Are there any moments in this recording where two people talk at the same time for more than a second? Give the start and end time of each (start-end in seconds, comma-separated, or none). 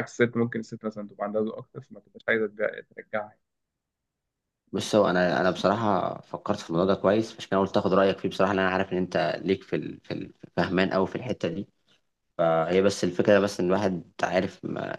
none